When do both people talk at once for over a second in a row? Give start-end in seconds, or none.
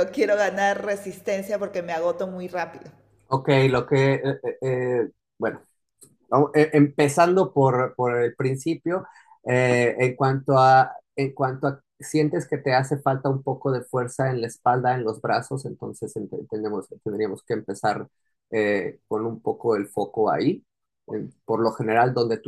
none